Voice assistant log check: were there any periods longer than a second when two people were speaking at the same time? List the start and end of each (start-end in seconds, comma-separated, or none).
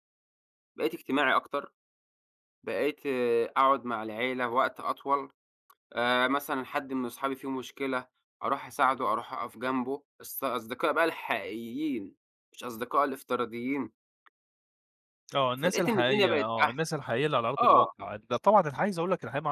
15.6-16.8